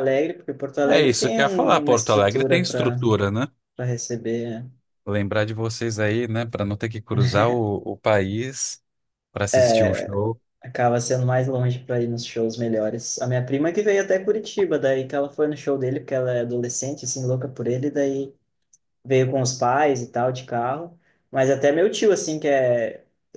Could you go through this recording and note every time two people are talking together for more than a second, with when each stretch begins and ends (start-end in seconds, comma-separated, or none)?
0.9-3.0